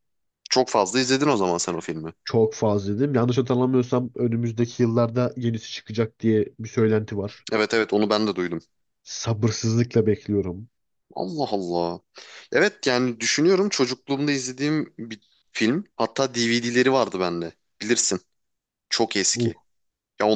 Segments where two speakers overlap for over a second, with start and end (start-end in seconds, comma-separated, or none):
none